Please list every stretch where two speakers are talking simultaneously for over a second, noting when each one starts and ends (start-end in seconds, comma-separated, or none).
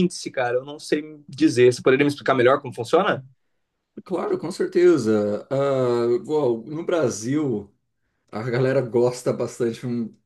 none